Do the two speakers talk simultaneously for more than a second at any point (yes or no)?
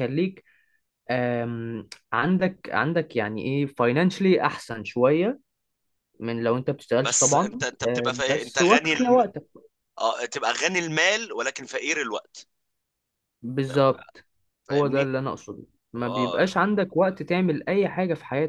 yes